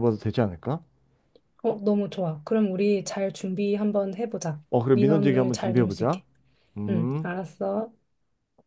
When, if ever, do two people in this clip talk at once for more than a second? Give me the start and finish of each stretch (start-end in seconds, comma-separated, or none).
4.7-6.2